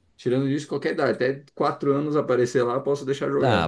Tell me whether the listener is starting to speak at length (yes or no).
yes